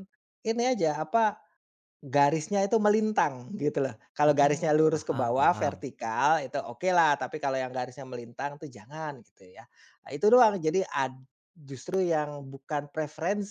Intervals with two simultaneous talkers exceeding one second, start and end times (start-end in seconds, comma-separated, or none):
4.3-5.9